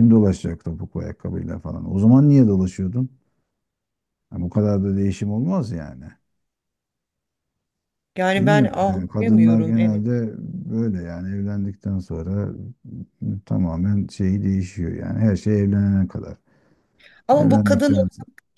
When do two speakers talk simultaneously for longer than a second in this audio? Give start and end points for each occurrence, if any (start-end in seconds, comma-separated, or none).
8.3-10.0